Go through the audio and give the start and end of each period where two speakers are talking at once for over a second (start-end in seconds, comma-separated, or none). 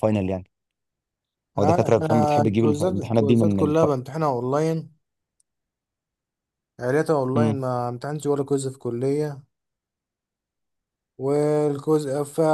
1.6-3.8